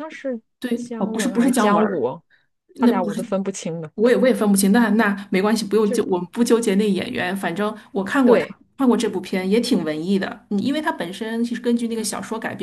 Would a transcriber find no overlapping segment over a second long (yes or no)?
no